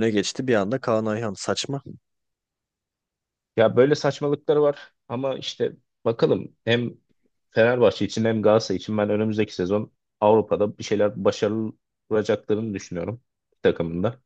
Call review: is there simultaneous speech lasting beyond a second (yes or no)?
no